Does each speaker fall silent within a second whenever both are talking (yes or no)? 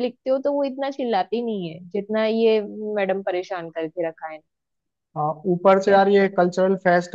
yes